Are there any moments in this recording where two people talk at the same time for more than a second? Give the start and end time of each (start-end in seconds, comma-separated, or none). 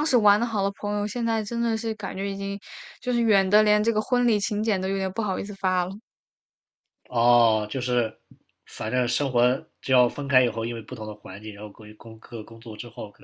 none